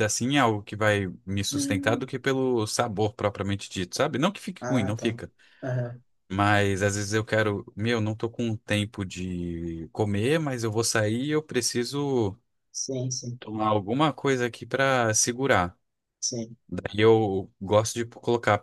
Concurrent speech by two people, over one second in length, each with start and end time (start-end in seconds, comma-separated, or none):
none